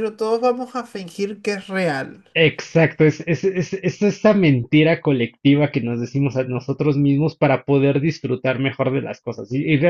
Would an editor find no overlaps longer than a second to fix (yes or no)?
yes